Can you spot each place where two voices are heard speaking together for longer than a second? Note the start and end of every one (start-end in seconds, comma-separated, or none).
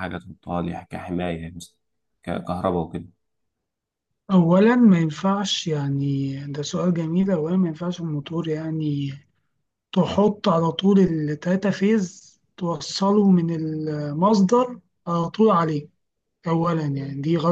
none